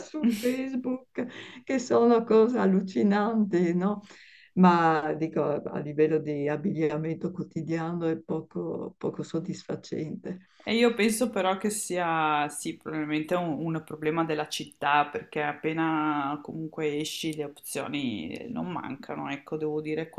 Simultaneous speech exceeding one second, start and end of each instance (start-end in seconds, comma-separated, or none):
none